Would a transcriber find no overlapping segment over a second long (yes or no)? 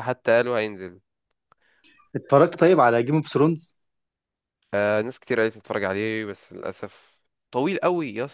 yes